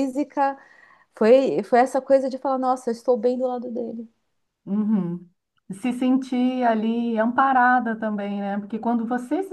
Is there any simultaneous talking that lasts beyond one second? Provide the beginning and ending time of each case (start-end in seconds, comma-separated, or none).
none